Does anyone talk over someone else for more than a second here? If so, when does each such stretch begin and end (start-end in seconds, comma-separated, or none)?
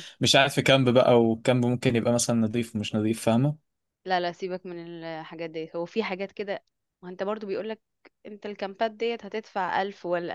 none